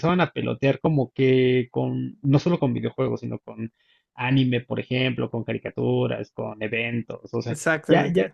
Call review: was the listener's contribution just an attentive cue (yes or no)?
yes